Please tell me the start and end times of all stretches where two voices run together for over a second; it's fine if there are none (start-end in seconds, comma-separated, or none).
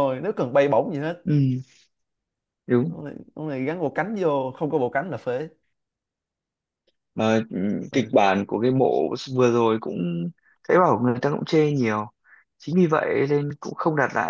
none